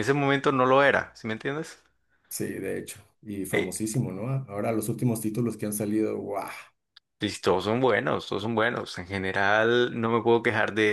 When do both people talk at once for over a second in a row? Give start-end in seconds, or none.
none